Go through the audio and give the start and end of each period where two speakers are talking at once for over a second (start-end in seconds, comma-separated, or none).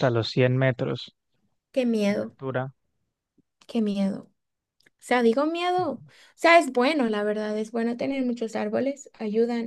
none